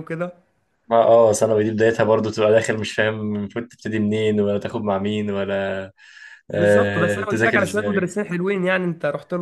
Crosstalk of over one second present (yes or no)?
yes